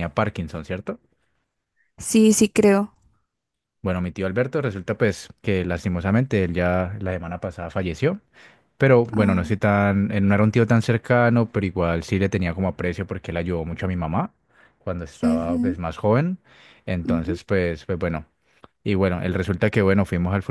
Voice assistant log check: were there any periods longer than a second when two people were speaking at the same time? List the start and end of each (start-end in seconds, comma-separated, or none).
none